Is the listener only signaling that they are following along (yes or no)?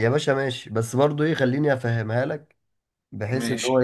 yes